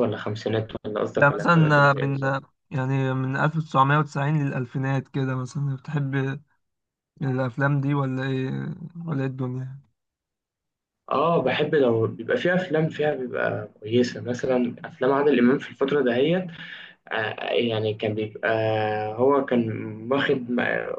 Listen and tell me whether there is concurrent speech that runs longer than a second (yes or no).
yes